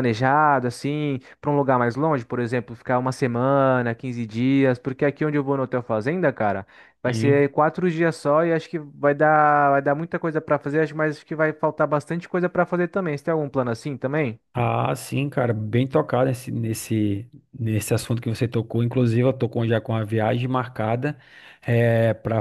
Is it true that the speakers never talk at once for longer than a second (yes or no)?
yes